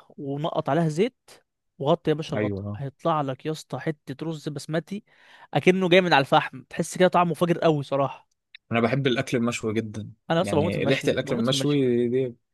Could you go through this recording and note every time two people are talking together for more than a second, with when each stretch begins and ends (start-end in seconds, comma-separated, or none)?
10.3-11.9